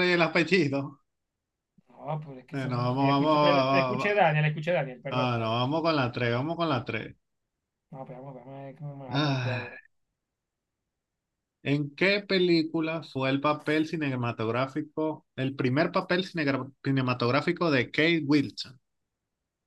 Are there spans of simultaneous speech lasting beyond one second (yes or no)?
yes